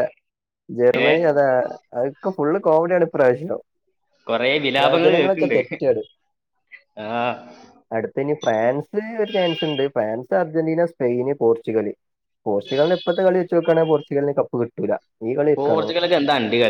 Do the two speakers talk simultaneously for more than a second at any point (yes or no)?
no